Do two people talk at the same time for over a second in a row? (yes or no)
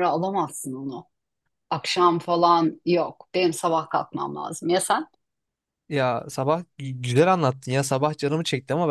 no